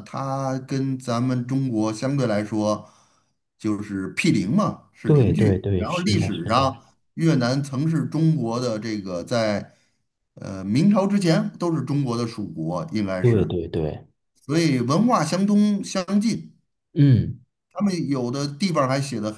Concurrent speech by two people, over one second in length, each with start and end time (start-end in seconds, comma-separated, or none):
5.0-6.7